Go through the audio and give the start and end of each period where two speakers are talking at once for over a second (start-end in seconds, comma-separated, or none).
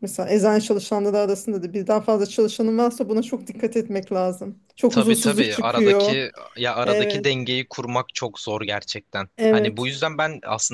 4.9-6.2